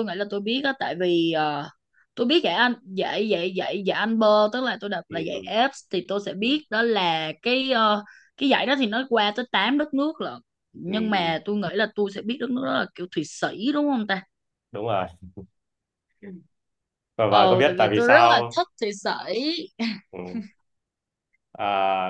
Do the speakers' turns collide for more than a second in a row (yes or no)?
yes